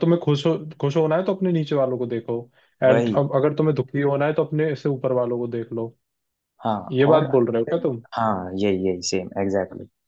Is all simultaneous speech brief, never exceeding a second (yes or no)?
yes